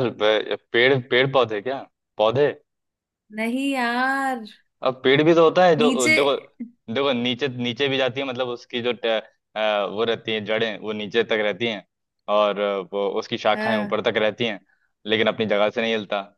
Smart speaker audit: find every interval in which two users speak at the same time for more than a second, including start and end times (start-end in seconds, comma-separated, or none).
none